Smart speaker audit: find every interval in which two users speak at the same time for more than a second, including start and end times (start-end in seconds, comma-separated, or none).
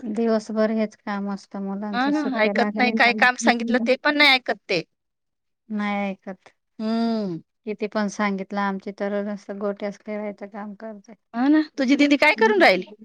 1.9-4.1